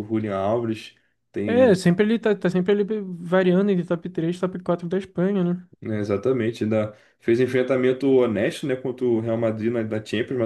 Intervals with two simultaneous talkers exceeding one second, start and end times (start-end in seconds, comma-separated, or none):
none